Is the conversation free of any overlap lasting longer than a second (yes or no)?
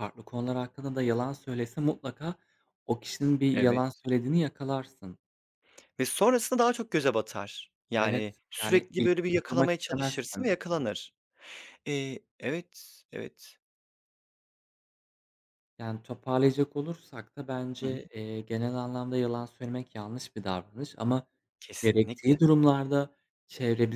no